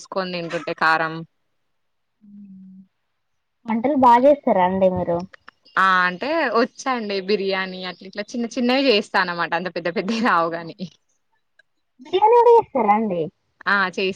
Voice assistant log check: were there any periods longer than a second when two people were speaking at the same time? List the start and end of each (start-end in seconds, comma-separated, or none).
none